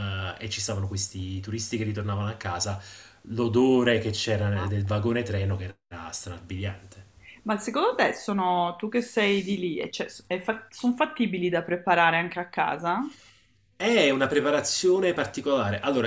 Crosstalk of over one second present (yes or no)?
no